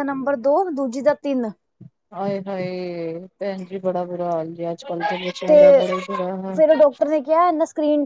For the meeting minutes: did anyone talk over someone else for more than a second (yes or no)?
no